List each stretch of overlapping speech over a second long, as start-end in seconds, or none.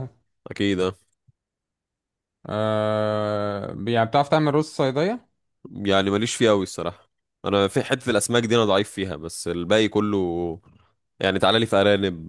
none